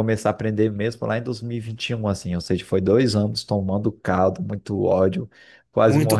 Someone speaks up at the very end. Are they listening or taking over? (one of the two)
listening